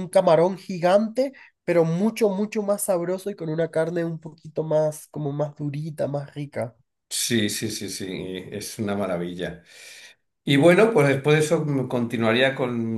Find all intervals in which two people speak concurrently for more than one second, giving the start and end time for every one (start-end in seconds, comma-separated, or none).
none